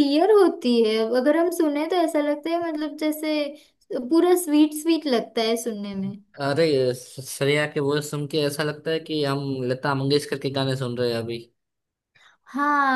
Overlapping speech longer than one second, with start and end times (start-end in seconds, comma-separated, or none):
none